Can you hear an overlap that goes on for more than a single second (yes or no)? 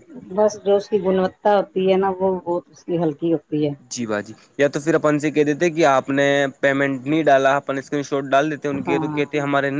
no